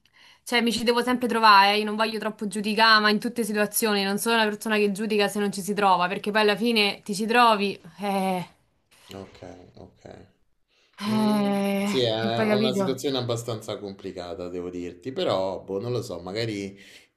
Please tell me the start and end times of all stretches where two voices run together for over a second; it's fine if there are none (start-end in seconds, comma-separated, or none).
11.1-13.1